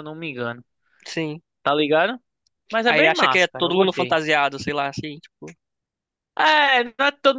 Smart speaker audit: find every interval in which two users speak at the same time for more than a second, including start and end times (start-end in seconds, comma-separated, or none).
2.9-4.2